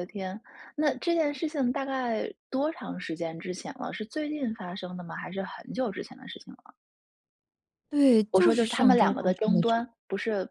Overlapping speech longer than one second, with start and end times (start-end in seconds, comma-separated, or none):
8.3-9.8